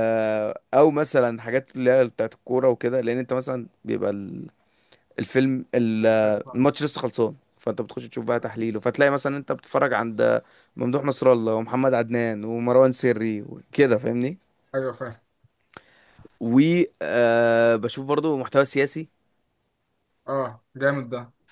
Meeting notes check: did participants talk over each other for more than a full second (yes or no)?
no